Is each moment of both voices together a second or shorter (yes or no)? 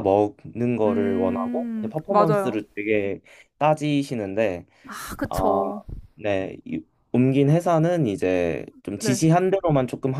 no